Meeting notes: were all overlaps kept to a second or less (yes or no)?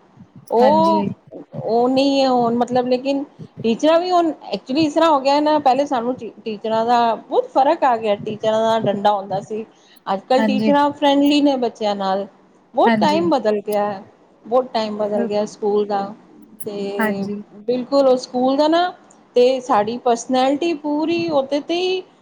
yes